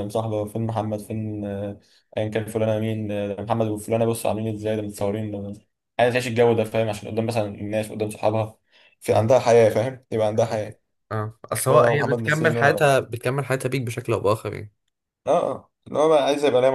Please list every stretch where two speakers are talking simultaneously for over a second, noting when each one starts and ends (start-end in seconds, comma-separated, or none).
11.7-13.0